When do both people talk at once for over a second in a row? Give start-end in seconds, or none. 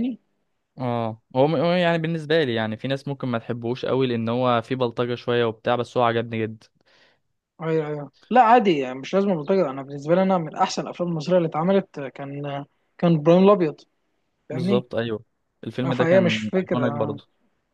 15.8-17.2